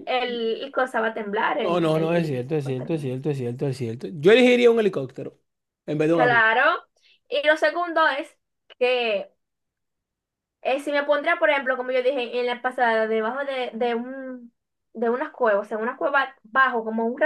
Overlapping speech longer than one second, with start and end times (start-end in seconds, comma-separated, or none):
1.6-2.9